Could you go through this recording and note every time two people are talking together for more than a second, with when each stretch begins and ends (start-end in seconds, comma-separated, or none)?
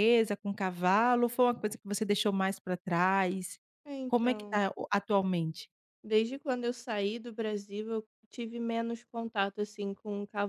none